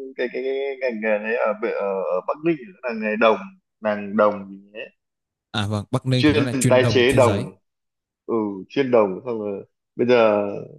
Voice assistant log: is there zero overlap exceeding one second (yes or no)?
no